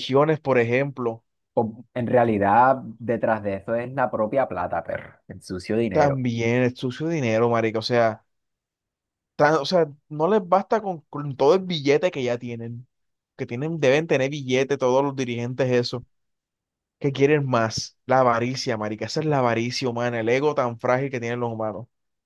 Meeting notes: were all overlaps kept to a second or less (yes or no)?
yes